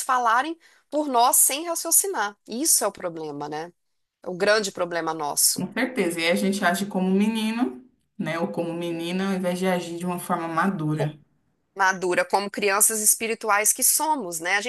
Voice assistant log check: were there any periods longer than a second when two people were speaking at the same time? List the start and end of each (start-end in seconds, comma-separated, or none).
none